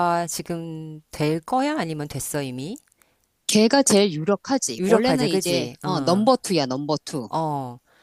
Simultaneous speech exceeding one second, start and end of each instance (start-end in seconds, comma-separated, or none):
4.8-6.3